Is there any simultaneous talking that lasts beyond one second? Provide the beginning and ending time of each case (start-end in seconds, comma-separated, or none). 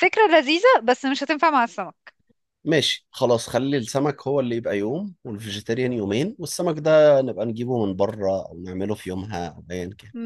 none